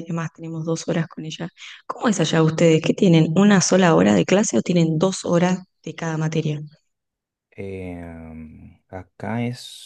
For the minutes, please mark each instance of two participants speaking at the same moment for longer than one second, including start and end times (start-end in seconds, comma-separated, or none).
none